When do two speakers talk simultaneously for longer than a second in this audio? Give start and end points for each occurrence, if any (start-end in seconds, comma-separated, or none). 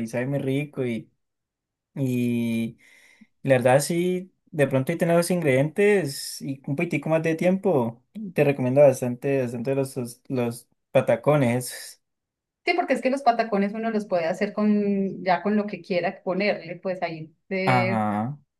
none